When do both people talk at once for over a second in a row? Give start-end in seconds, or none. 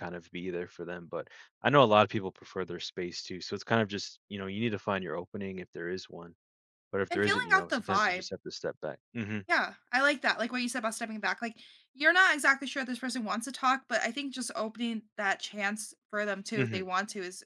7.1-8.3